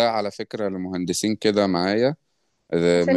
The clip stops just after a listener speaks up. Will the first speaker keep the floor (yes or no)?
yes